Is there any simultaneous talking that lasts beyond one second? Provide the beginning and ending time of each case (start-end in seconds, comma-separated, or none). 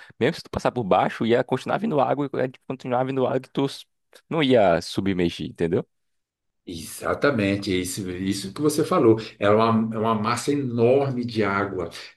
none